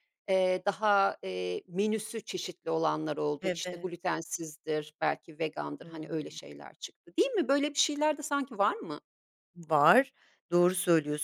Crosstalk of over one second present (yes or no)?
no